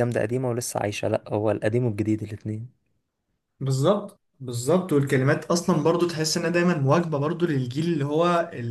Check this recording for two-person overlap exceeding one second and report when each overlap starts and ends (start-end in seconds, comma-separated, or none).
none